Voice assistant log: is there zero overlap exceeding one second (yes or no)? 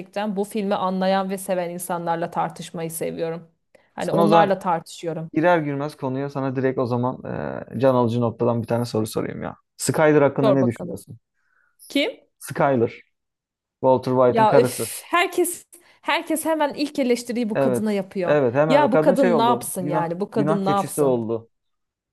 no